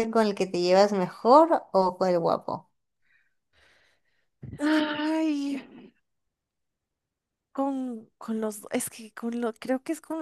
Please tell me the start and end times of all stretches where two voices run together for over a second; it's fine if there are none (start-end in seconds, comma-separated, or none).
none